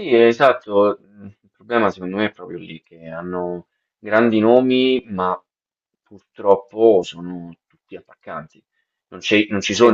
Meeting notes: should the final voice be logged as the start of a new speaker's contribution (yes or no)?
no